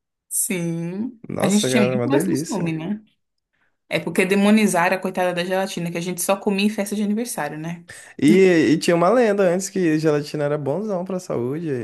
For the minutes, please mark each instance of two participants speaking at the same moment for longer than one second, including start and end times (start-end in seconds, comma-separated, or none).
1.3-2.8